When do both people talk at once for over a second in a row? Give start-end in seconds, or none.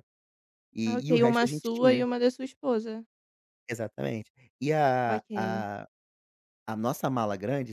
0.8-2.1